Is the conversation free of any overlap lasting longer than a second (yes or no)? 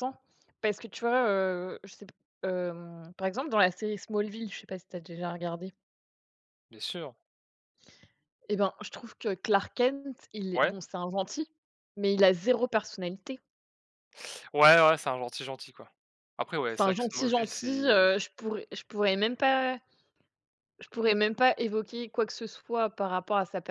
no